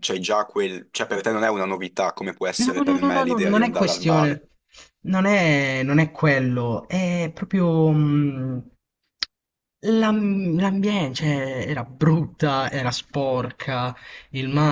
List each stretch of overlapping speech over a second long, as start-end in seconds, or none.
2.6-4.4